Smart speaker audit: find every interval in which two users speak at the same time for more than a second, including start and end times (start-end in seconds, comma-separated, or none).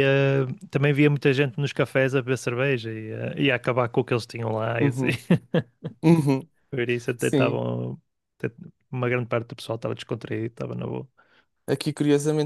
none